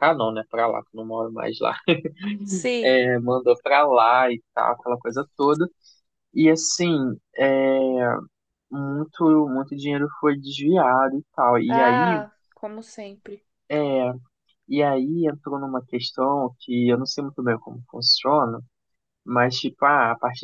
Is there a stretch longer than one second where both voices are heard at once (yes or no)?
no